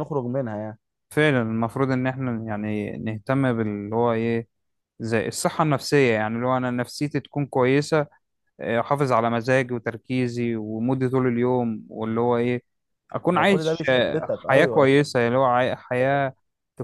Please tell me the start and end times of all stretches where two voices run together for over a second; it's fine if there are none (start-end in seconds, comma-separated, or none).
13.3-14.9